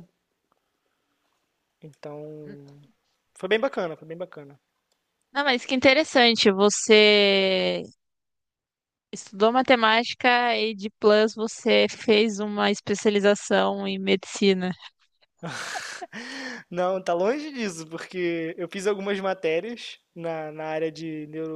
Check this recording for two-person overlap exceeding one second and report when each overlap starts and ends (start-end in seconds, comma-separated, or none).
none